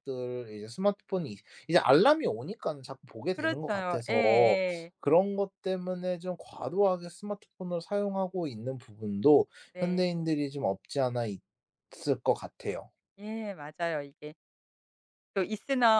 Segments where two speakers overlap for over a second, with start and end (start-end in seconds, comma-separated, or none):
3.3-4.6